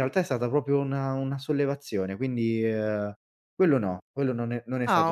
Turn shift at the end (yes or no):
yes